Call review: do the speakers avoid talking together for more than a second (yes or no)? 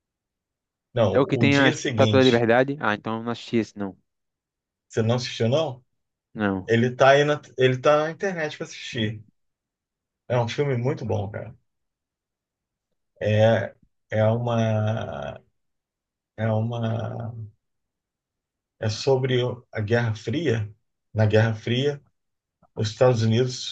no